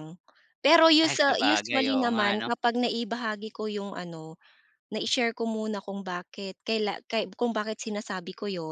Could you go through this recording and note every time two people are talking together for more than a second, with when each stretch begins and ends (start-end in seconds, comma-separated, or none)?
1.0-2.5